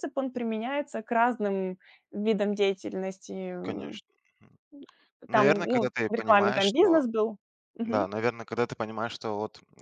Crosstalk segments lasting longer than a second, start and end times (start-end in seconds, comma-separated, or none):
5.3-7.0